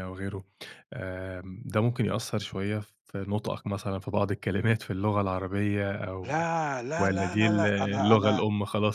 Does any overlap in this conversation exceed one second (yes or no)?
yes